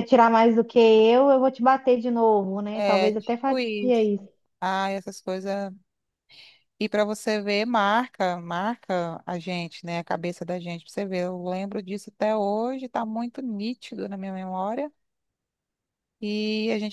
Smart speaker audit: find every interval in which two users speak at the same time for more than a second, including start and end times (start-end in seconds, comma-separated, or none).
2.7-4.1